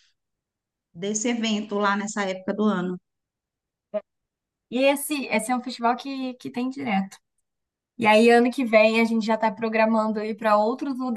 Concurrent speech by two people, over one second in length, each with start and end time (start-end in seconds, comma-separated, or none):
none